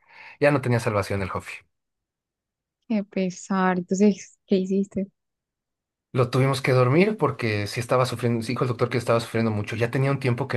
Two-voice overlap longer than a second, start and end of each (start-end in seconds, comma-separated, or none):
none